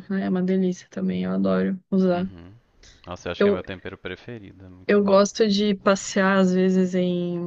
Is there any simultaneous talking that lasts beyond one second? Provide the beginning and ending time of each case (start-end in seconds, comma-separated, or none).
none